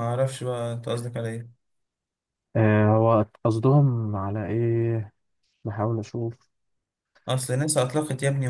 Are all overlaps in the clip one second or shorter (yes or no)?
yes